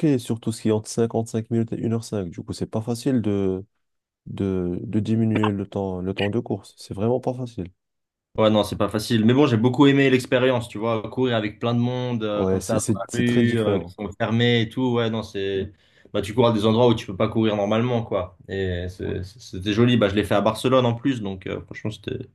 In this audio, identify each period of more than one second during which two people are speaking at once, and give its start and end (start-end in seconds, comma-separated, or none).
12.3-13.9